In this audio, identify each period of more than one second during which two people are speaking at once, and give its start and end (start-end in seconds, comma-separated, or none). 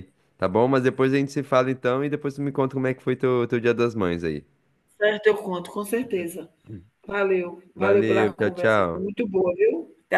7.8-9.1